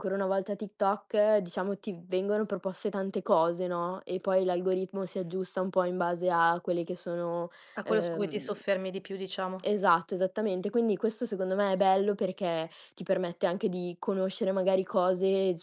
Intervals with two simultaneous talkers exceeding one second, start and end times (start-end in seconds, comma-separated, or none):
none